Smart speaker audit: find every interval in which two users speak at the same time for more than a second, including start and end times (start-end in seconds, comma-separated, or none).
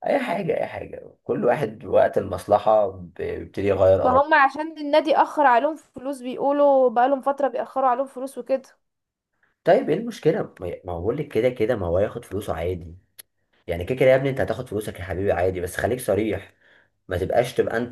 none